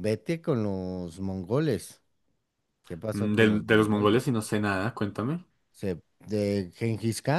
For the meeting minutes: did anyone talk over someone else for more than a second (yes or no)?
yes